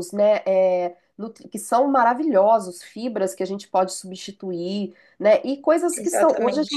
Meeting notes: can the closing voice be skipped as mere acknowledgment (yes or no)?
yes